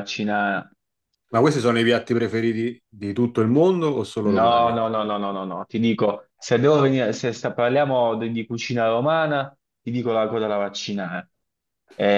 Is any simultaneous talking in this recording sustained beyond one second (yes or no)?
no